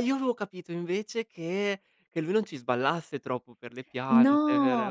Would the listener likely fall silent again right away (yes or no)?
no